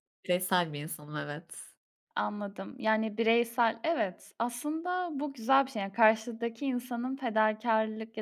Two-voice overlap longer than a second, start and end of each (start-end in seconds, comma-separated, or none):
none